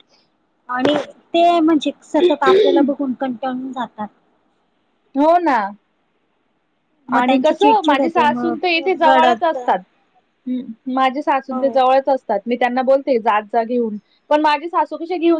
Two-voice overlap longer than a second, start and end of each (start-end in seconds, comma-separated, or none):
7.2-9.6